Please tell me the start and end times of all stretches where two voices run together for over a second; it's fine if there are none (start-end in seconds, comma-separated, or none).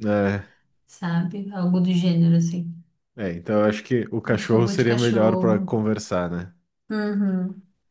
4.3-5.7